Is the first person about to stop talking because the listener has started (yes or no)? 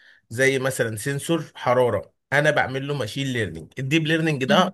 no